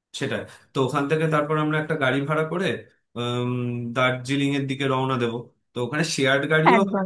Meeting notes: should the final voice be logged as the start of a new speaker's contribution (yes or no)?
no